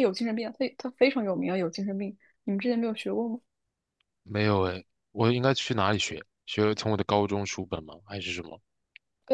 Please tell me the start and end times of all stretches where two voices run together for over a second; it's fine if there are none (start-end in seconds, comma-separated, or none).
none